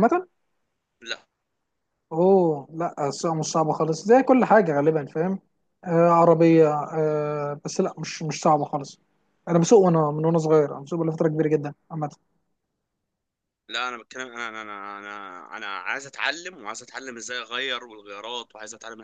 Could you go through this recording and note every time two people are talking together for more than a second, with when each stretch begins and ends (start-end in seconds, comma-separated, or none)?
none